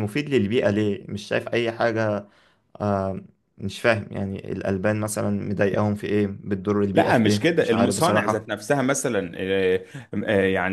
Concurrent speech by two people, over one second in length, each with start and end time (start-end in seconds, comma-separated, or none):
6.9-8.4